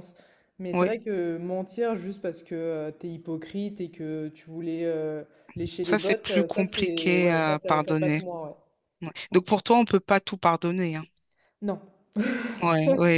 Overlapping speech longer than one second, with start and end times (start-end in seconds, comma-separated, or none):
5.8-8.2